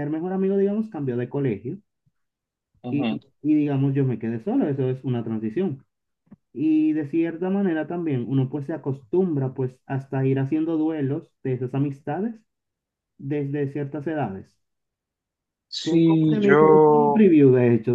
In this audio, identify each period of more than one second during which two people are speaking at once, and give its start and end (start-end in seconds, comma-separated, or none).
15.8-17.3